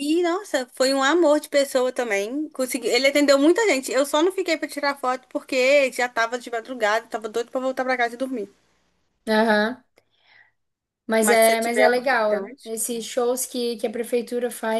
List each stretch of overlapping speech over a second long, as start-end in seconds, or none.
11.2-12.7